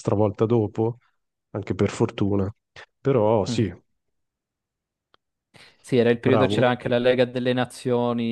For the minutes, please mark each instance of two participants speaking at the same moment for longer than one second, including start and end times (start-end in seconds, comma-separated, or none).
none